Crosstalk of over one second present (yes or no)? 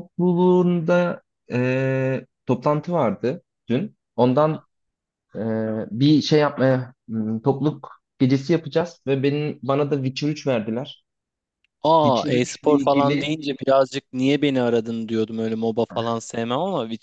yes